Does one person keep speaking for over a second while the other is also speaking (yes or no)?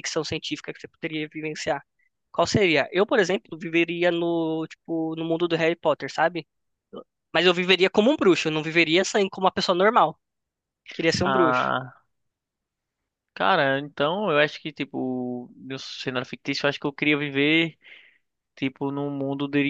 no